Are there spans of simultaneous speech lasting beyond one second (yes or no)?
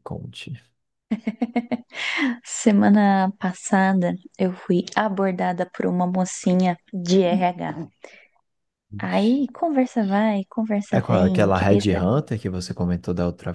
yes